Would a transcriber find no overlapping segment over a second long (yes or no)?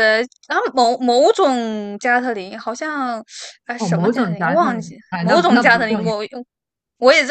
no